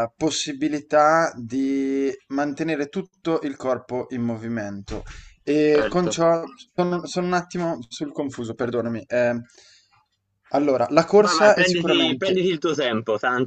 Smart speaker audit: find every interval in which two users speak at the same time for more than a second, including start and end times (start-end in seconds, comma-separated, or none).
11.2-12.4